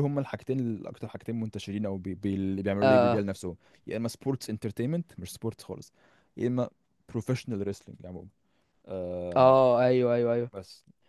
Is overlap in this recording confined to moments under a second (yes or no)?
yes